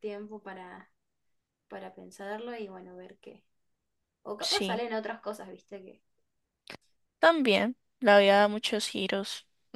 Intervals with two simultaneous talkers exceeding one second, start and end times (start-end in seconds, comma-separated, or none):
none